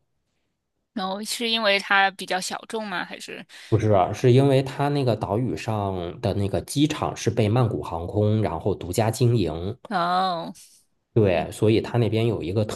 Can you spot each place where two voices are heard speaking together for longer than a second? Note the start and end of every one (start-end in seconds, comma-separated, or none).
none